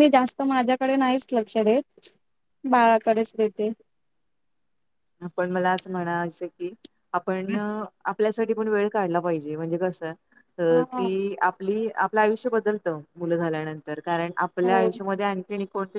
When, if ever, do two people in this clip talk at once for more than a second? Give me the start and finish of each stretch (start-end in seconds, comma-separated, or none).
none